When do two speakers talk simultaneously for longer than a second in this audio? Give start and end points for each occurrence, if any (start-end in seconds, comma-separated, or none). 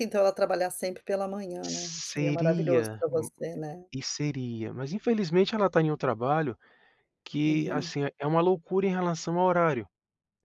1.6-3.3